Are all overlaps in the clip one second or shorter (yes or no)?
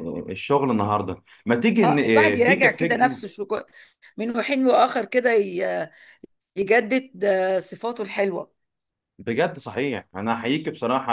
no